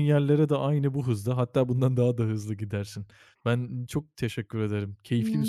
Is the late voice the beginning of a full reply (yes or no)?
yes